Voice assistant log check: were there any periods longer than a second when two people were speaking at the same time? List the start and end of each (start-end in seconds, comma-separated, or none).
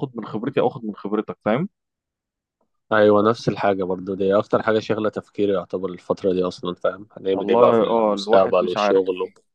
7.3-9.0